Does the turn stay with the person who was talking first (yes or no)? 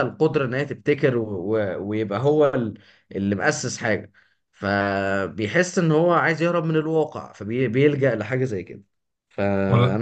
yes